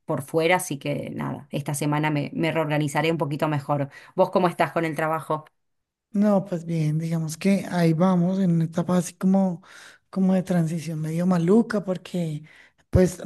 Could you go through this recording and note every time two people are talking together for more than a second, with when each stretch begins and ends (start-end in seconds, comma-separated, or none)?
none